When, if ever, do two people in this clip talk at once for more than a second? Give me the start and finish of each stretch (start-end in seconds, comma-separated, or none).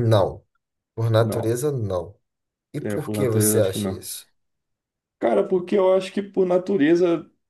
2.8-4.0